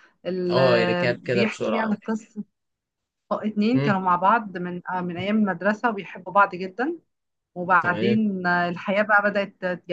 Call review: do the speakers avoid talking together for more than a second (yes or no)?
no